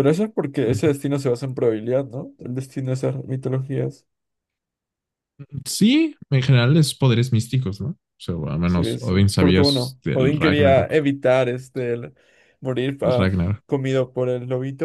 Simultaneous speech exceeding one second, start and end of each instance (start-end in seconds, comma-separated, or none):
8.6-10.9